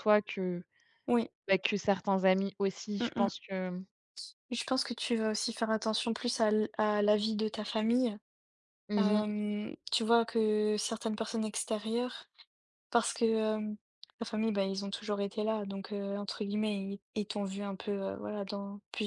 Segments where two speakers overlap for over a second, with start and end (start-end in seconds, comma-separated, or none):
none